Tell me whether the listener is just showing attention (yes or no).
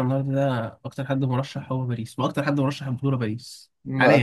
no